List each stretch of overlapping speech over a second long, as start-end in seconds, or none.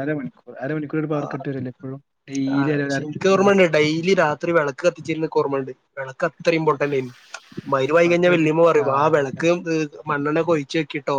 7.7-9.4